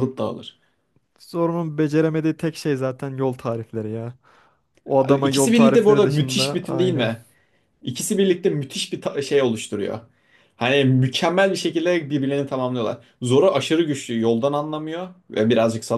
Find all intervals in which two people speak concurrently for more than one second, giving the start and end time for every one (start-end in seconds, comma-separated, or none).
5.2-7.1